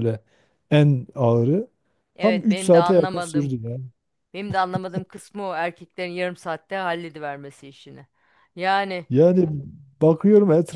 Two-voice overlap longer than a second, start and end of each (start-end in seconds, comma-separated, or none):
2.2-3.5